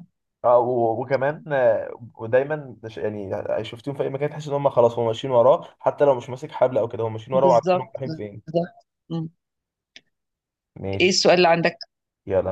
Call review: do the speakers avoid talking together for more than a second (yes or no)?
no